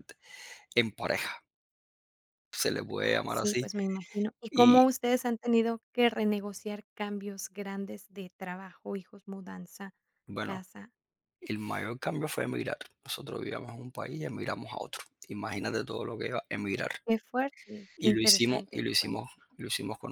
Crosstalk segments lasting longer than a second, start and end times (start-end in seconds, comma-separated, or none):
18.0-19.3